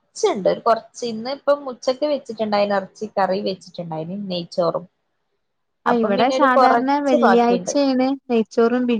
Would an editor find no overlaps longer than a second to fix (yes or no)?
no